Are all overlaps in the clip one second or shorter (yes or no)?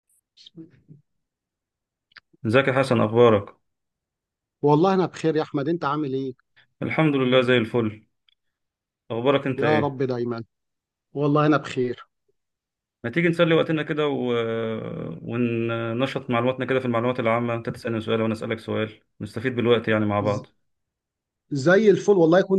yes